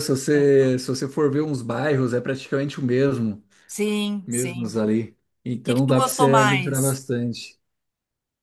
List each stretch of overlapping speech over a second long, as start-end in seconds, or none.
5.6-7.0